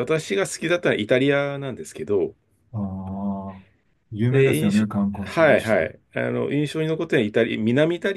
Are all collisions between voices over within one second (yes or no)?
no